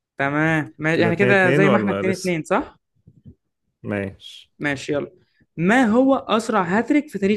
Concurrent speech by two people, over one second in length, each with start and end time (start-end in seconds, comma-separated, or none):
0.9-2.4